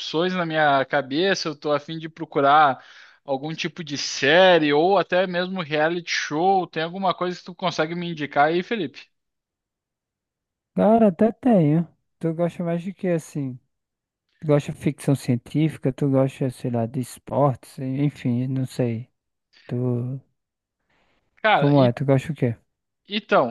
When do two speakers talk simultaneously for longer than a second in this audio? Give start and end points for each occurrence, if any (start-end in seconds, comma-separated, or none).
none